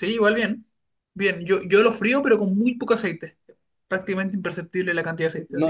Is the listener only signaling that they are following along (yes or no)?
no